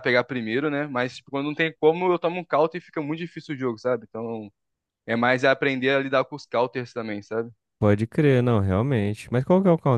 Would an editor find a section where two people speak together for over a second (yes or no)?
no